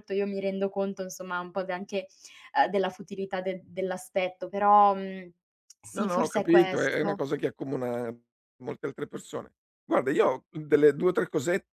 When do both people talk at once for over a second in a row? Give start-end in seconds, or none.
5.9-7.2